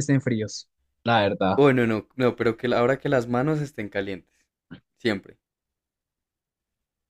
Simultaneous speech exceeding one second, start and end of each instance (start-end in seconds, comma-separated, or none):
none